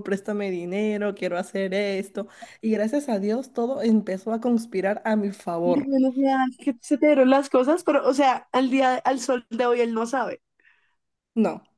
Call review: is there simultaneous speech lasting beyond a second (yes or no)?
no